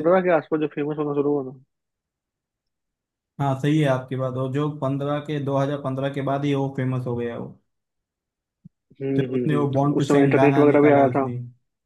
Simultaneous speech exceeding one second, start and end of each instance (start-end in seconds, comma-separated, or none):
9.2-11.3